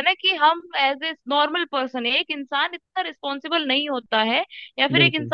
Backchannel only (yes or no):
yes